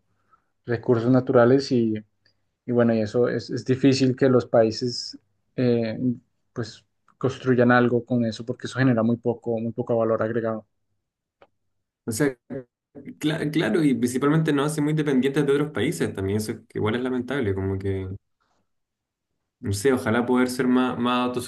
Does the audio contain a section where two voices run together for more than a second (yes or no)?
no